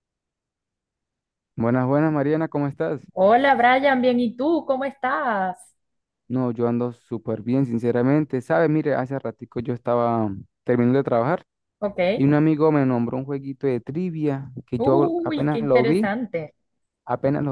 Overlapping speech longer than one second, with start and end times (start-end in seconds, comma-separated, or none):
14.8-16.1